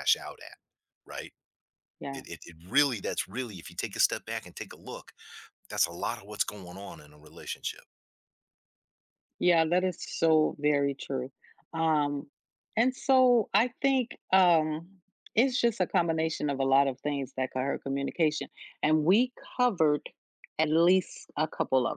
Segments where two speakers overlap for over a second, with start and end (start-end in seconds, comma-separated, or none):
none